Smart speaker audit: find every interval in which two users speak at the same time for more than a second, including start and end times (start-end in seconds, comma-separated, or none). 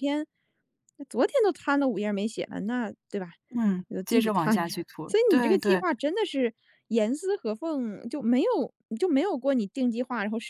3.9-5.8